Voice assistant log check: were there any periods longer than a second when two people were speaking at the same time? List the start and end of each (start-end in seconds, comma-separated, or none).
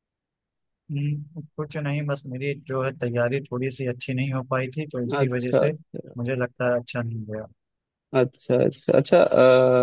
none